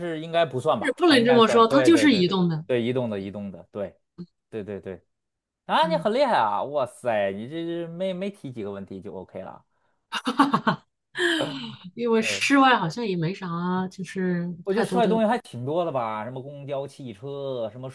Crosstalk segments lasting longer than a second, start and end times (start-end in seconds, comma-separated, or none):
0.8-2.6